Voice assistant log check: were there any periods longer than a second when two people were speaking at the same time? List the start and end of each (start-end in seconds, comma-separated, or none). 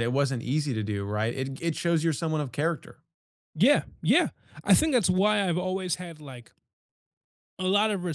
none